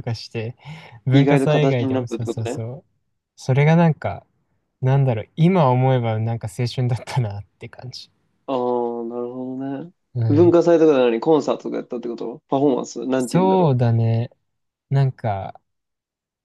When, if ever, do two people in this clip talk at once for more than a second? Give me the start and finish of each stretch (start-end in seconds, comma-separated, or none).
1.1-2.6